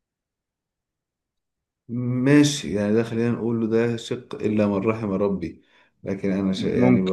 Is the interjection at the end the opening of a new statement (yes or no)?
no